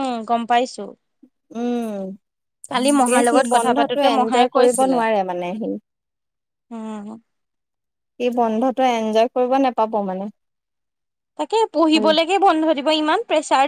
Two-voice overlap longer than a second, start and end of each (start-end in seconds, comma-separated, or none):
2.8-5.0